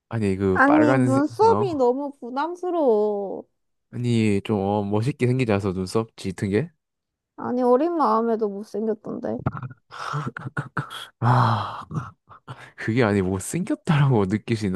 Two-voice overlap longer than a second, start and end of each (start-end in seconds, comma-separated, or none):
0.5-1.8